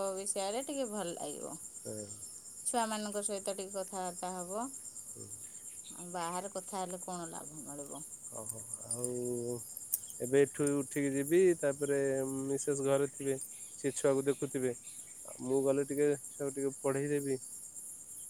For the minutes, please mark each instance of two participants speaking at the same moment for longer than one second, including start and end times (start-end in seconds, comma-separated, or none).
none